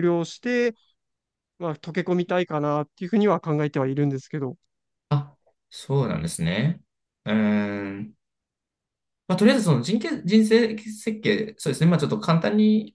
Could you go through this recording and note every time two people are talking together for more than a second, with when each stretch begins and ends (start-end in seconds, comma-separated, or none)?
none